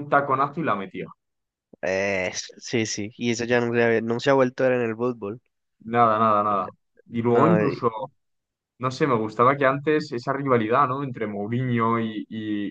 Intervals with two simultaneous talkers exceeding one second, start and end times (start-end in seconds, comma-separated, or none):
none